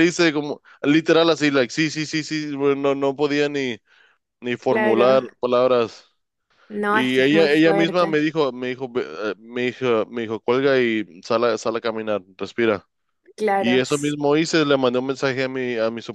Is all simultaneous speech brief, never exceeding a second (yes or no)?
no